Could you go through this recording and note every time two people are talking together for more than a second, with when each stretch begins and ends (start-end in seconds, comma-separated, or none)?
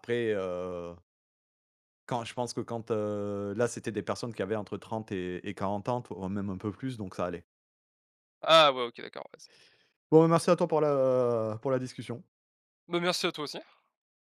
none